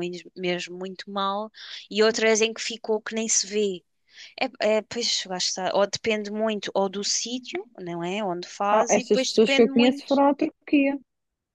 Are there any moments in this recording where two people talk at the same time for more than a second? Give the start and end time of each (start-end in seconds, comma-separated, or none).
8.7-10.2